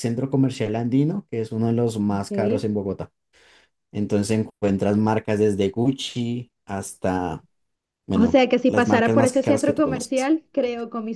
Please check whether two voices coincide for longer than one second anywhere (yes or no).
yes